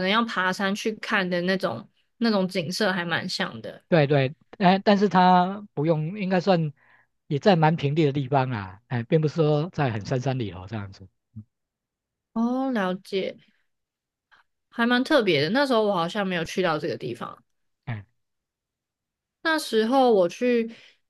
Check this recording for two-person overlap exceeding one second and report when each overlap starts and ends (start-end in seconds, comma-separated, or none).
none